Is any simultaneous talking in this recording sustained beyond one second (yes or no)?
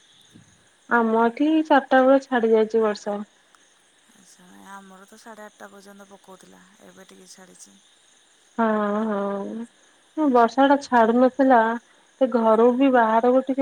no